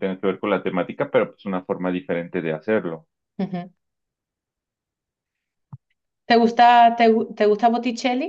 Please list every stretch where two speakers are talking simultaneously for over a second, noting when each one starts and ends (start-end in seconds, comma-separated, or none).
none